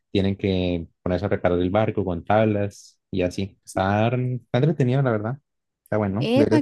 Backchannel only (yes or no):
no